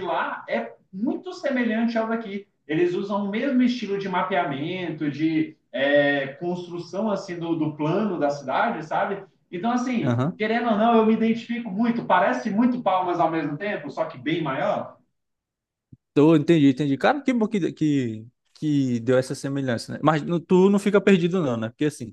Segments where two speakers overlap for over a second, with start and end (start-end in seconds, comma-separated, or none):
none